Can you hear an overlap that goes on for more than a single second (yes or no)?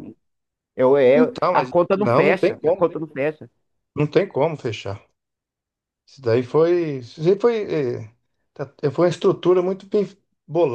yes